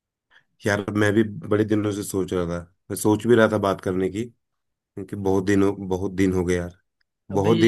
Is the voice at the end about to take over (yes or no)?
no